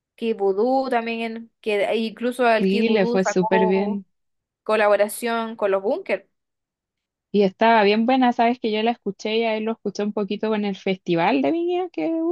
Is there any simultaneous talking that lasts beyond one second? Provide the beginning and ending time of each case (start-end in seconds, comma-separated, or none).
2.6-4.0